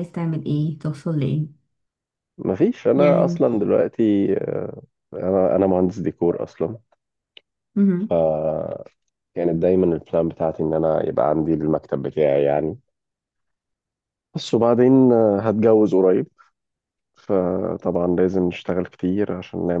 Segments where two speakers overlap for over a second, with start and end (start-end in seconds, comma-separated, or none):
none